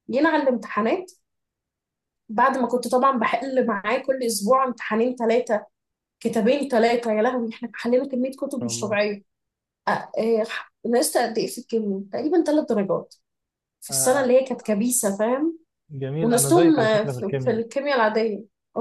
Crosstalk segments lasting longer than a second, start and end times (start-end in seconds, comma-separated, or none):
16.2-17.6